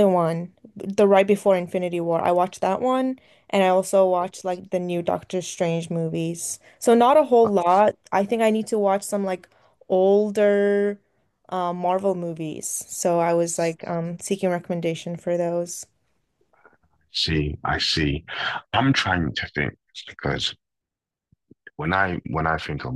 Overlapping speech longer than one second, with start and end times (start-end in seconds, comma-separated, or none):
none